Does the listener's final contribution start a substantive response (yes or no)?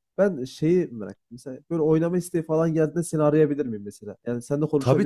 yes